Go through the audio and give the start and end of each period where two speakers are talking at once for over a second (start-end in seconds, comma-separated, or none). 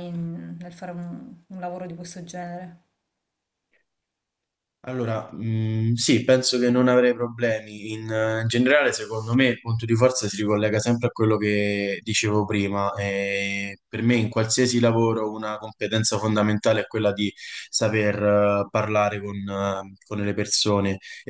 none